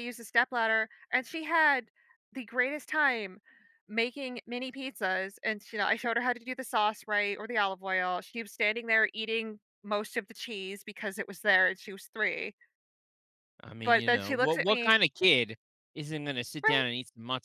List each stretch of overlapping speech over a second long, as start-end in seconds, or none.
13.8-15.0